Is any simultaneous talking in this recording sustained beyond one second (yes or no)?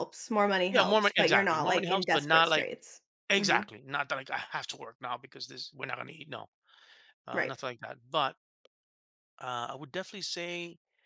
yes